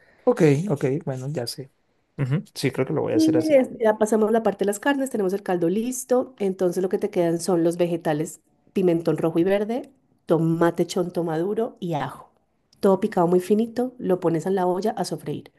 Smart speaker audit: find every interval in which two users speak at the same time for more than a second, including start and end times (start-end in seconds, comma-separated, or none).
none